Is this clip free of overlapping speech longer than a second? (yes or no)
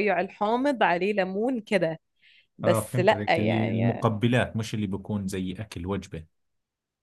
no